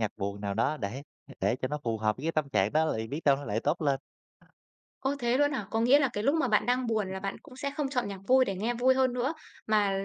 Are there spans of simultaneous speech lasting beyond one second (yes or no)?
no